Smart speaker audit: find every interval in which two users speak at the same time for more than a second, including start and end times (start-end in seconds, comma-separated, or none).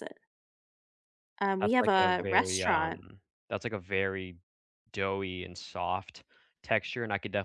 1.6-2.9